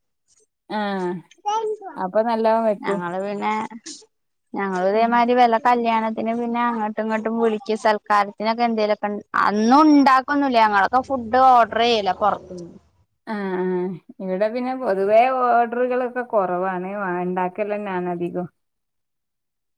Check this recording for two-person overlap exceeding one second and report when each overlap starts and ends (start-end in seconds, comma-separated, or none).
none